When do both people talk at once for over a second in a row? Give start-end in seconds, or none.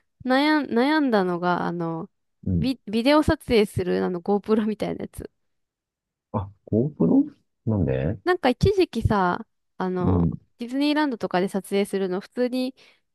none